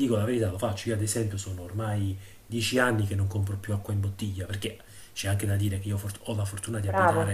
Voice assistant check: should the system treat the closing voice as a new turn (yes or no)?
no